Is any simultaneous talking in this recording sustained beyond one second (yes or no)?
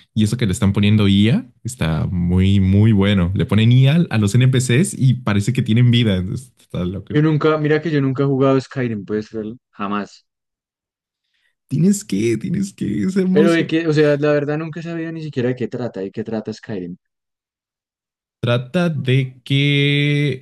no